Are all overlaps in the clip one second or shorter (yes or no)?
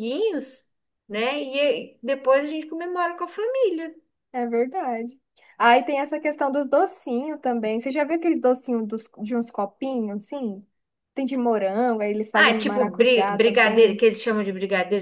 no